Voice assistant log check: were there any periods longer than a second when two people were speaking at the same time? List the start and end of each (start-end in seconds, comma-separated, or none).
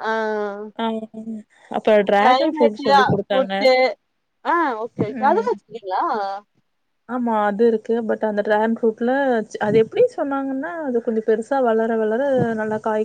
2.2-3.5